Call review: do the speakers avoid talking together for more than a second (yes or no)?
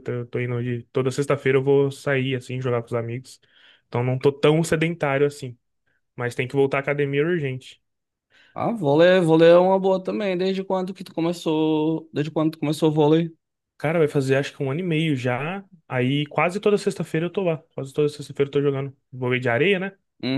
yes